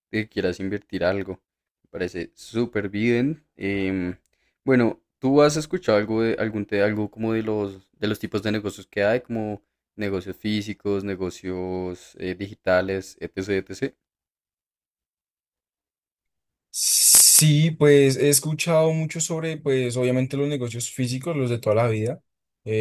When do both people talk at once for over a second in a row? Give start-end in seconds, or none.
none